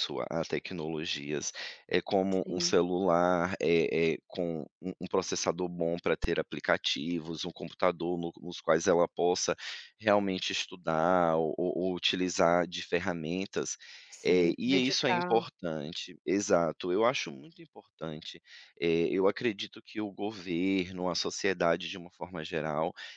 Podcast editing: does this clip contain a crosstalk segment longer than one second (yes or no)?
yes